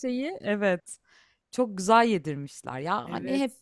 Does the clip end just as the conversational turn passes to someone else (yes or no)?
no